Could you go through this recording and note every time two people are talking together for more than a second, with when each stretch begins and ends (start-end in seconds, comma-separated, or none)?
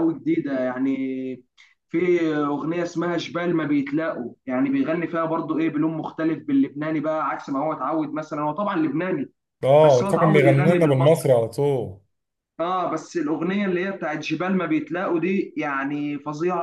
9.8-11.3